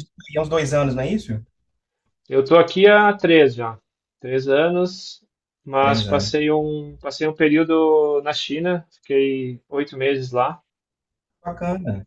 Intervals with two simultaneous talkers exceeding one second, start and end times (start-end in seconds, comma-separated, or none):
none